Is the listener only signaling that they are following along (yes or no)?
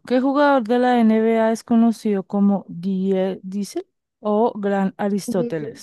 yes